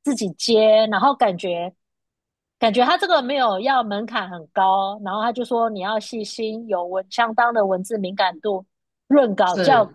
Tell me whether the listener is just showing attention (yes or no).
yes